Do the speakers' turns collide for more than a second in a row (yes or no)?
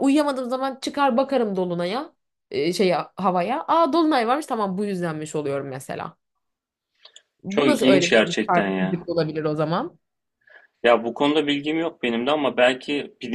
yes